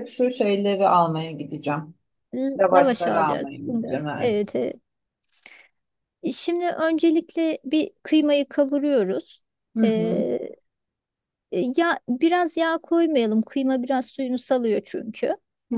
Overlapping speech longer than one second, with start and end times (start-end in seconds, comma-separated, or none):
2.6-4.5